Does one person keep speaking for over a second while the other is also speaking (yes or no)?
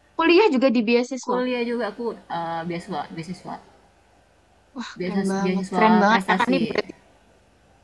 yes